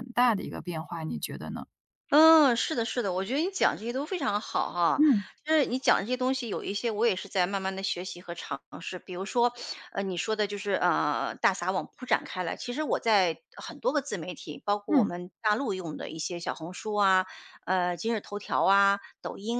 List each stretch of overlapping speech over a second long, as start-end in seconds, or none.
none